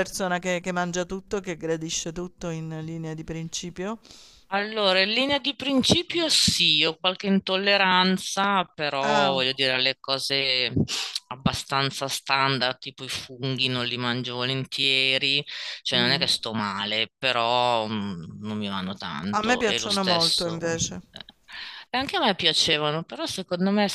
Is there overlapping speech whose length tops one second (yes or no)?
yes